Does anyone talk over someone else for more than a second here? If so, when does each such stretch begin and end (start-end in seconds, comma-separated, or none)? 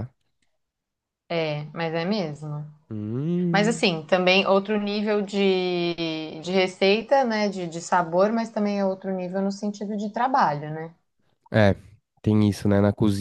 none